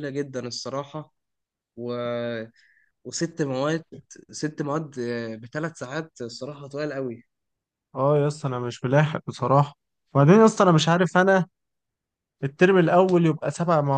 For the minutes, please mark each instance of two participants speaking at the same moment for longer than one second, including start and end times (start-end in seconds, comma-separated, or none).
none